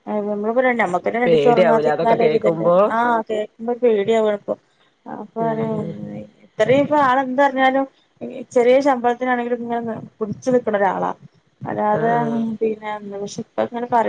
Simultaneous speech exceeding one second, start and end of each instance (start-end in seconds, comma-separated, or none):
1.3-2.8